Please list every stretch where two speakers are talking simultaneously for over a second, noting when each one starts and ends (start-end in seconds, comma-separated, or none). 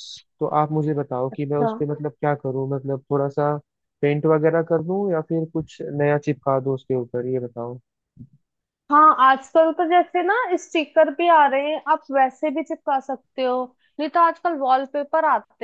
none